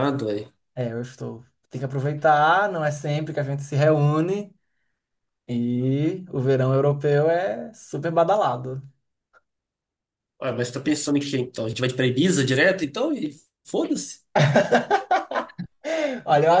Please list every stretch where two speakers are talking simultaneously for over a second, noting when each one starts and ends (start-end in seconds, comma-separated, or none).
none